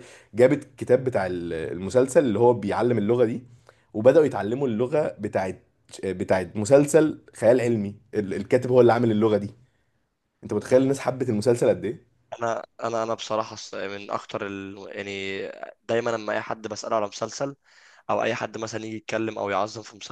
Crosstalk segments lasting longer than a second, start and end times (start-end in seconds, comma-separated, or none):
none